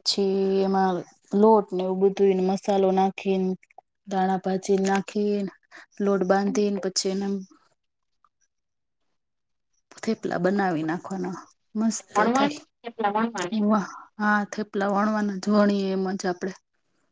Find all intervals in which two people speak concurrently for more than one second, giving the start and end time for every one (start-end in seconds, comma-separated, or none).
11.9-13.8